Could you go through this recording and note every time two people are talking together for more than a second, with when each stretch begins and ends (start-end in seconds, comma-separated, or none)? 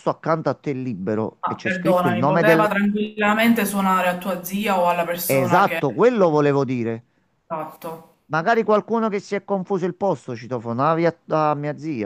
1.4-2.7